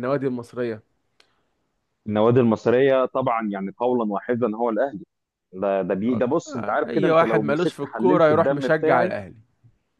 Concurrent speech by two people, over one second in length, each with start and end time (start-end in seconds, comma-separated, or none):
6.5-9.1